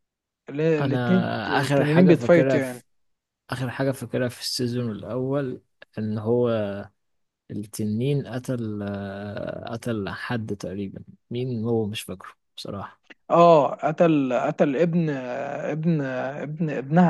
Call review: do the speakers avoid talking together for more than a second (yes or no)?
no